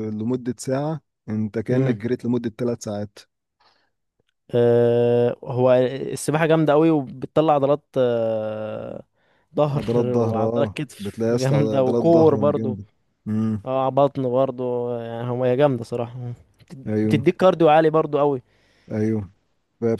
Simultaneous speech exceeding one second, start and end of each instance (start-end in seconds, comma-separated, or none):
9.8-12.8